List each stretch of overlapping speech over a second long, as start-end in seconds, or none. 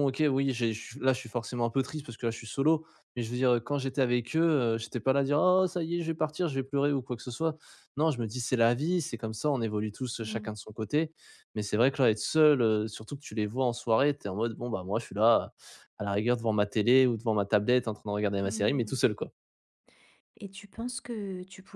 none